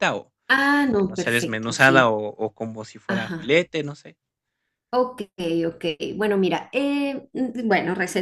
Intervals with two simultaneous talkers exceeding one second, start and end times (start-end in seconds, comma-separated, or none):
0.8-2.1